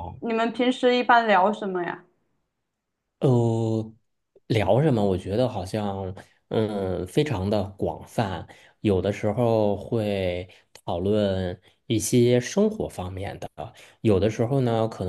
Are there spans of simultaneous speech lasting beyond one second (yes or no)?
no